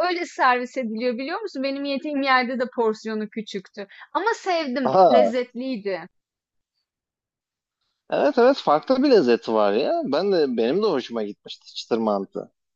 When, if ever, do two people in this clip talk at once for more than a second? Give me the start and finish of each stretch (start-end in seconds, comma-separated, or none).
none